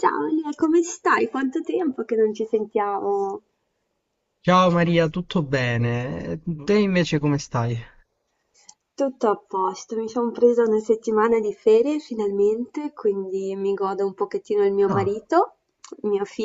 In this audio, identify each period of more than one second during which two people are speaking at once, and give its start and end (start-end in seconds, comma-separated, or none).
none